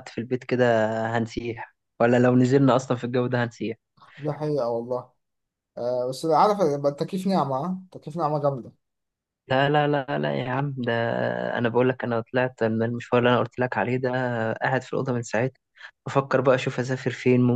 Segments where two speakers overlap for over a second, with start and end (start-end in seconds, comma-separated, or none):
none